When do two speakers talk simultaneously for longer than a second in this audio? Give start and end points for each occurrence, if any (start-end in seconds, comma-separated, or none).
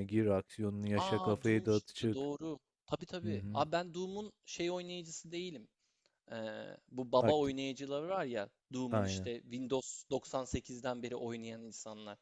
1.0-2.3